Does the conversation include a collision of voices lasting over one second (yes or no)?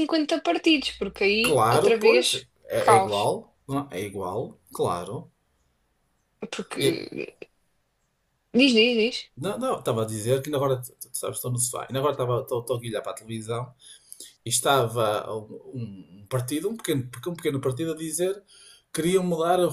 yes